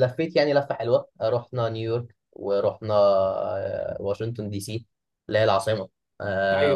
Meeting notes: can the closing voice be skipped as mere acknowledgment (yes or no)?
yes